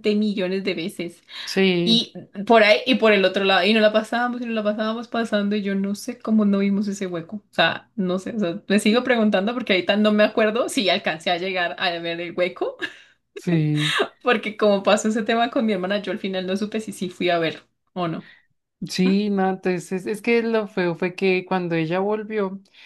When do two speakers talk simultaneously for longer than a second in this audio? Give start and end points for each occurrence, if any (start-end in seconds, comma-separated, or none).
none